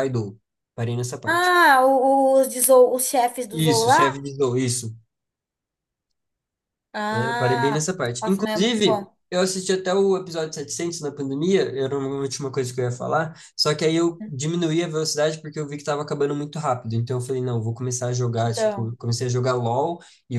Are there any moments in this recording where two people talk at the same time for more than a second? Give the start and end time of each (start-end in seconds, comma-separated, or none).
7.1-9.2